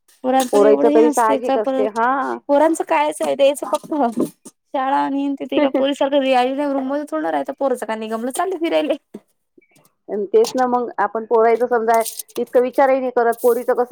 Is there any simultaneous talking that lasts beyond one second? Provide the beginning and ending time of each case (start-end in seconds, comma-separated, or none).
0.5-2.0